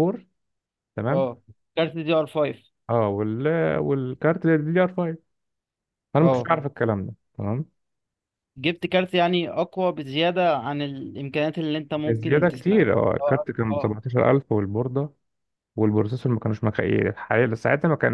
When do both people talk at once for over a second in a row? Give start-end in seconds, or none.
12.1-13.9